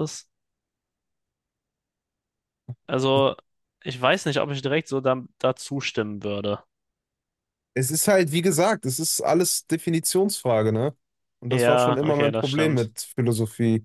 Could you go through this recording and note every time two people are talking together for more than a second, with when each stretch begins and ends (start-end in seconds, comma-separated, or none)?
11.5-12.9